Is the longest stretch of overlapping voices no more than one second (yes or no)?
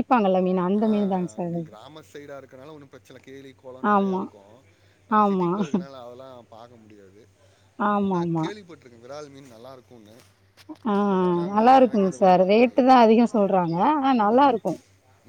no